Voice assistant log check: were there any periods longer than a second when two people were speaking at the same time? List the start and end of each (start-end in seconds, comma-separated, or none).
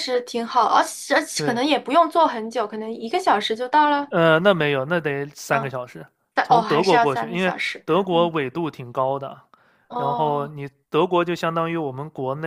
6.4-8.3